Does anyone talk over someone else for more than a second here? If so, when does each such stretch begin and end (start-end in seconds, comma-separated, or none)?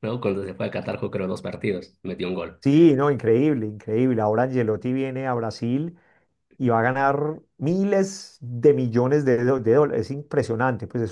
none